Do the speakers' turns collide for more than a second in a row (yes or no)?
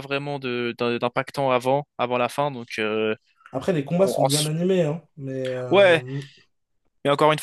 no